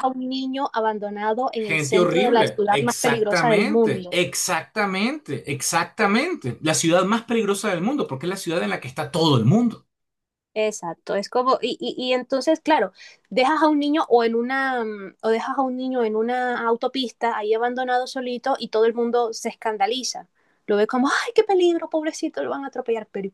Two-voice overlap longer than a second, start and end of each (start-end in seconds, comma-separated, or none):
1.5-4.2